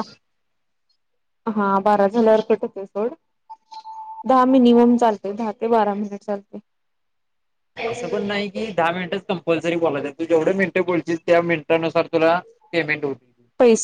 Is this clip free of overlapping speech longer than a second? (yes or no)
yes